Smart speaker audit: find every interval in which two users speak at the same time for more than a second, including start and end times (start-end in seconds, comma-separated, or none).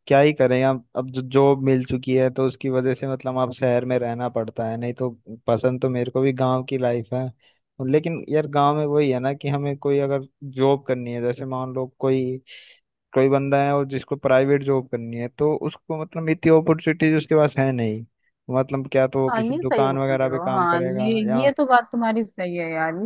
19.3-21.5